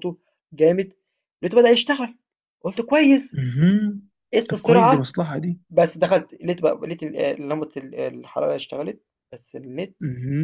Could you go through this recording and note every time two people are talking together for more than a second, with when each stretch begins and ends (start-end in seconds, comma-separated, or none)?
none